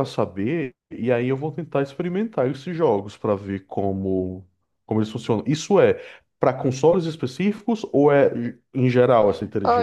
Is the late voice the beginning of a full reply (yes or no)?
yes